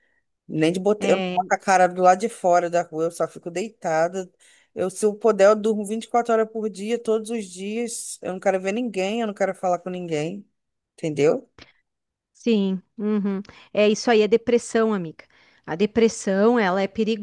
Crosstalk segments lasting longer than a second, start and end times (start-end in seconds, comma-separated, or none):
none